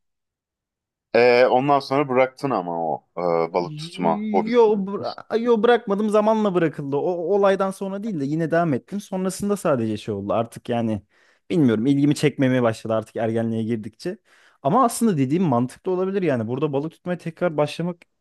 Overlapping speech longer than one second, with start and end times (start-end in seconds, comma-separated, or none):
3.6-4.8